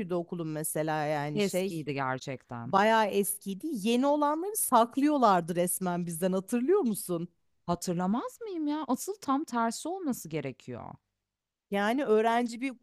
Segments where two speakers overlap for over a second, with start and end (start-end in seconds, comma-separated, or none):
none